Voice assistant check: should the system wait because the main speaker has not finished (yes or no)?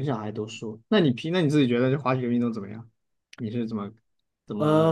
no